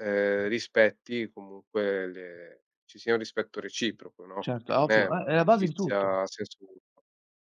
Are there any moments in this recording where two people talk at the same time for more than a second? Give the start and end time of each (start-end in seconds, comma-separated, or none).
4.4-6.1